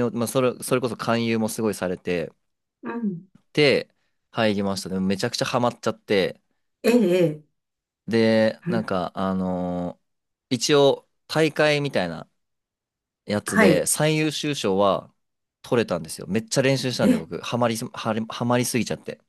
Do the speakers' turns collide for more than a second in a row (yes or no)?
no